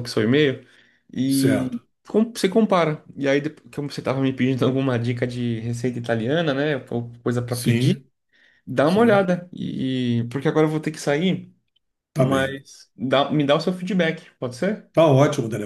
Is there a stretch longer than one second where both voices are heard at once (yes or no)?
no